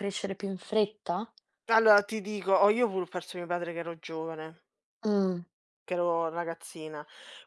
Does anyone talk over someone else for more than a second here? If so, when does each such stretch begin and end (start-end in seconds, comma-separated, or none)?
none